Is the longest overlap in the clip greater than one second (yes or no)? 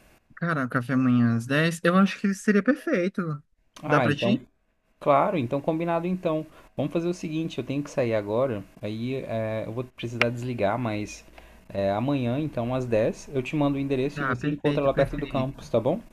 yes